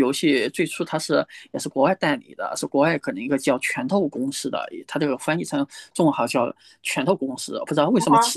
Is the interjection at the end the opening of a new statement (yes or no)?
no